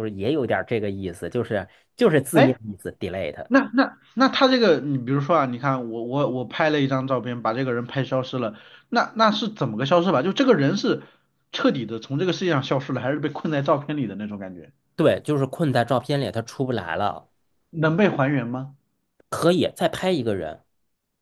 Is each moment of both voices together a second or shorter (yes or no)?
yes